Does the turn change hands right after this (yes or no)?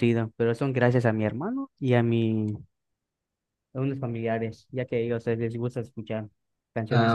yes